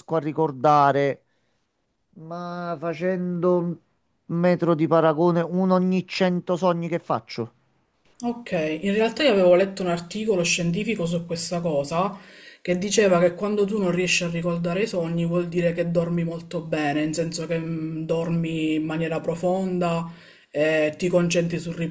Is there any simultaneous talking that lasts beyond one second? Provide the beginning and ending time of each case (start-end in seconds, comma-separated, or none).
none